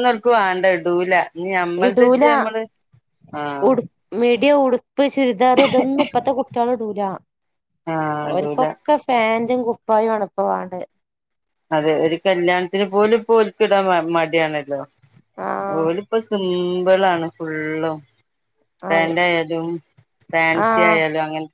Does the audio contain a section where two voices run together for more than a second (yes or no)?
no